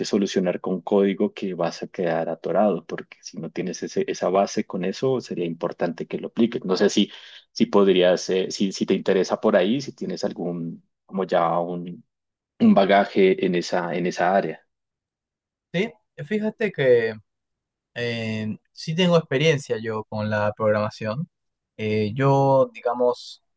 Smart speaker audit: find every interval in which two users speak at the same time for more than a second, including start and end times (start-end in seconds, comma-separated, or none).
none